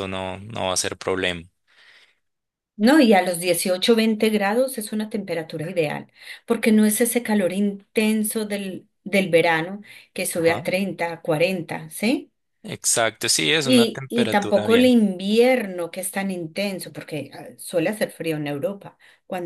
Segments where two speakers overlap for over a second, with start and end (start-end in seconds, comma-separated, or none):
13.6-15.0